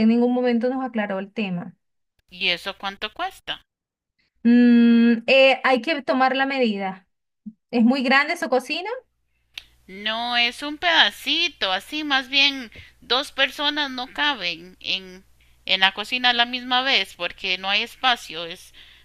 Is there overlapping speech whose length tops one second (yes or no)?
no